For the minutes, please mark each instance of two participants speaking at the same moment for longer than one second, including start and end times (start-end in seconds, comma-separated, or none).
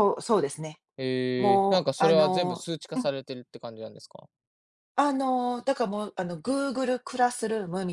1.4-3.1